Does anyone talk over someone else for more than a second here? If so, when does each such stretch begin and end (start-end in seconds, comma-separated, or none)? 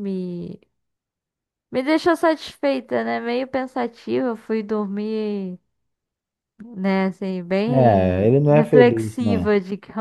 7.7-9.5